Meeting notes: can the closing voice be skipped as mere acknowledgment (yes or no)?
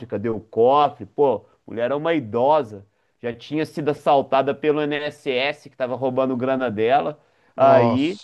yes